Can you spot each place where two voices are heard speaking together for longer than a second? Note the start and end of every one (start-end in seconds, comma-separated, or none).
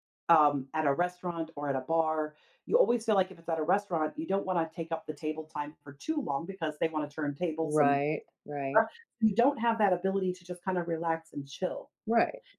none